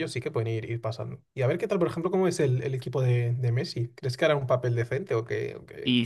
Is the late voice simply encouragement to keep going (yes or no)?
no